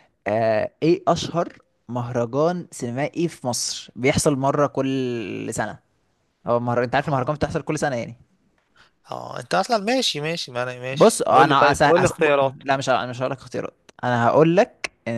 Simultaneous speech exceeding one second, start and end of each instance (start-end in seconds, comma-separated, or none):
10.9-12.3